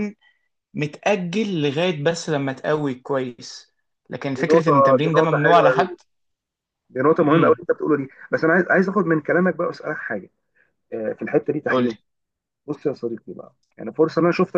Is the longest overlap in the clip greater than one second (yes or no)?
yes